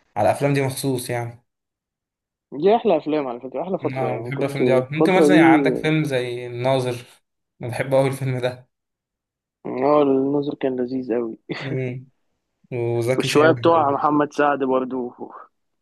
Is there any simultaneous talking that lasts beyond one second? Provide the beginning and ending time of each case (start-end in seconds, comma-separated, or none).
4.0-5.6